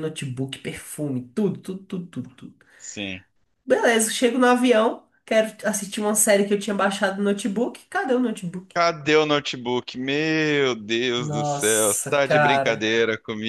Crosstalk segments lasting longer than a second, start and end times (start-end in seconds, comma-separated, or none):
11.2-13.0